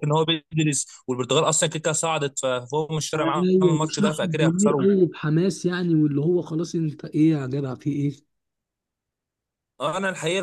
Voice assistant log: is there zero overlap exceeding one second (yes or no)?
no